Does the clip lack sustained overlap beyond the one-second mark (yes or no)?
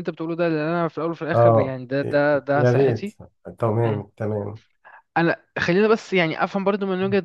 no